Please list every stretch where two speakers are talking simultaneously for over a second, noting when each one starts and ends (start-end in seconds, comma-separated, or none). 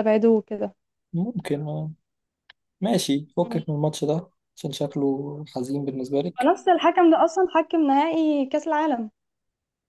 none